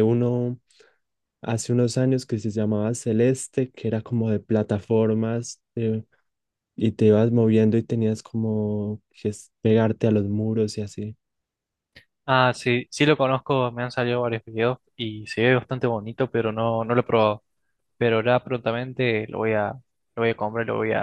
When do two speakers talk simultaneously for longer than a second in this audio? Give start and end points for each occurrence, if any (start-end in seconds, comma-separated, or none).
none